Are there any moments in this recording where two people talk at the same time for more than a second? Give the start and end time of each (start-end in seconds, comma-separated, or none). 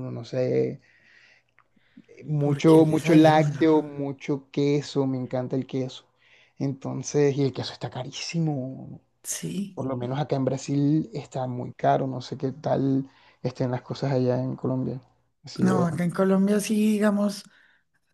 2.4-3.8